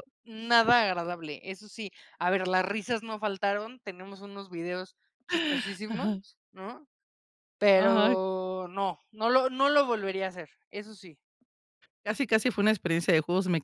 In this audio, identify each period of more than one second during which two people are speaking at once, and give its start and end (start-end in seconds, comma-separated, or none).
none